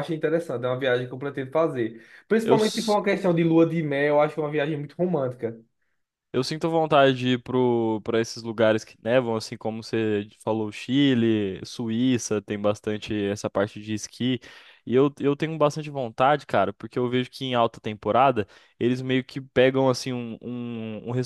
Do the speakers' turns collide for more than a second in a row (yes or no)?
no